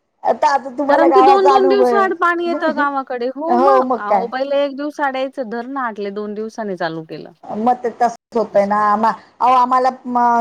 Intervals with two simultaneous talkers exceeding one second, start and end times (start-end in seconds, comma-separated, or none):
0.9-2.8